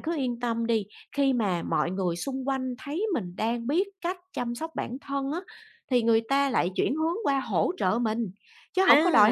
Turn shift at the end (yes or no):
yes